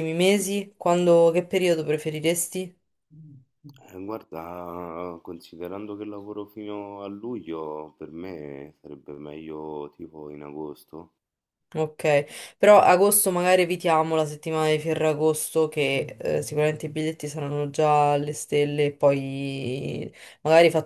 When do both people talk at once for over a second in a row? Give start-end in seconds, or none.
none